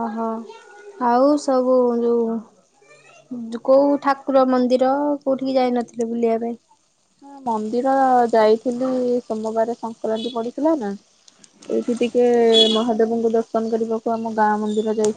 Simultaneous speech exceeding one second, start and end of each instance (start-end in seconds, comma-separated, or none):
none